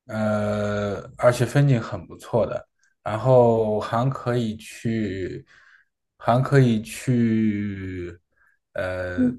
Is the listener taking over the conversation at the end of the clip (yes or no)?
yes